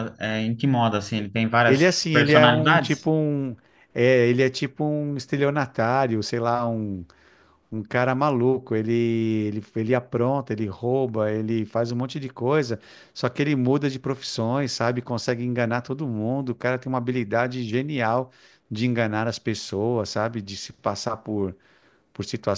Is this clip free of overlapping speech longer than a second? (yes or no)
no